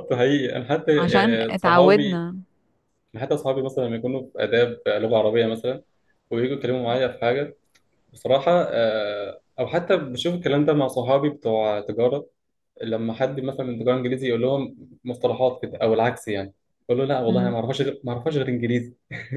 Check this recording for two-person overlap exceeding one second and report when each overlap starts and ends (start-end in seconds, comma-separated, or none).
1.0-2.3